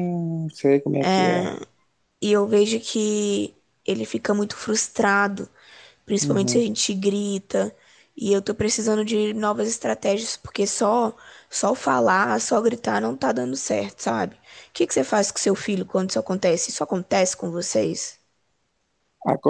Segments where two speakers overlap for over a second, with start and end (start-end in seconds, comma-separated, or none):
none